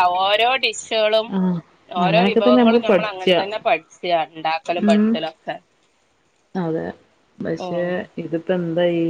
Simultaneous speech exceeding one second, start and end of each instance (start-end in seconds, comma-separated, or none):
2.1-3.4